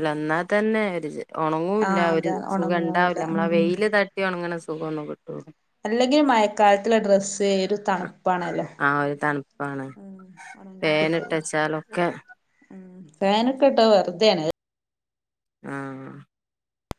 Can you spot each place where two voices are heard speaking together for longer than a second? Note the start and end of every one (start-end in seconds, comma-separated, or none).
1.9-3.7